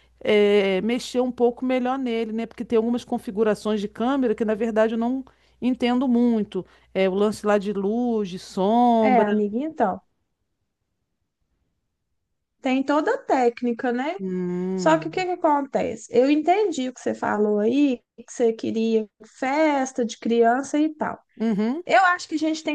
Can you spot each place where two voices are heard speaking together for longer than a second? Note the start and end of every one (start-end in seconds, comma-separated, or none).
none